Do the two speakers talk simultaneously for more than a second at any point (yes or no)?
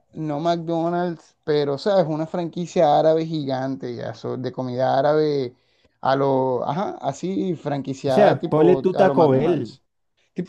yes